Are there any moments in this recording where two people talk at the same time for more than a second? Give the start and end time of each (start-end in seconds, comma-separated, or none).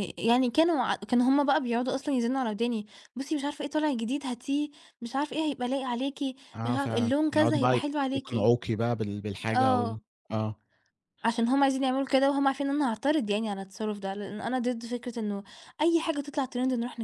6.7-8.5